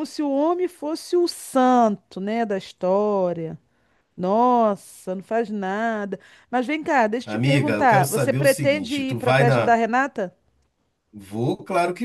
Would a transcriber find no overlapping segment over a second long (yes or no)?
no